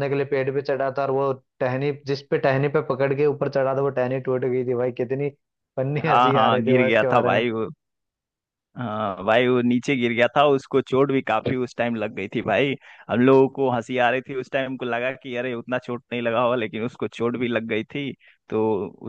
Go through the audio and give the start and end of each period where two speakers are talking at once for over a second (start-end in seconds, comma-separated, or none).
6.1-7.4